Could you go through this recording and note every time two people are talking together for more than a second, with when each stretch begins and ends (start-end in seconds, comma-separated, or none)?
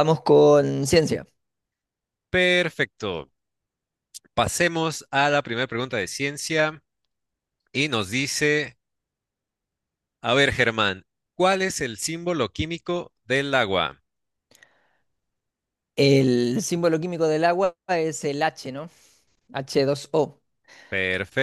none